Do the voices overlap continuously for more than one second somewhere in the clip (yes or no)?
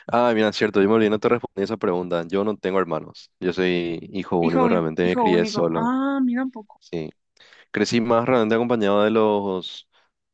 yes